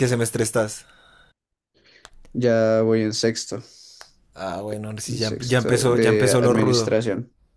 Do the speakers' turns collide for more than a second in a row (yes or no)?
yes